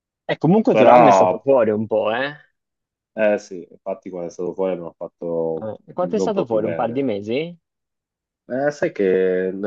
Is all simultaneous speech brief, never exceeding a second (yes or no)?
no